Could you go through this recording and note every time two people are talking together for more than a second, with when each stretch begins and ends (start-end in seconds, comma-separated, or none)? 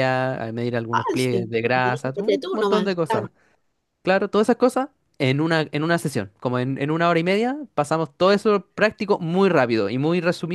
0.9-3.3